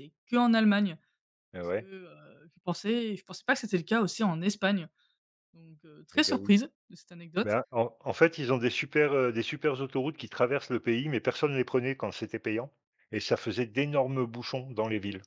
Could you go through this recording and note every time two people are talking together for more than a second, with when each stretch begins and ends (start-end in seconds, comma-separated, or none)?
none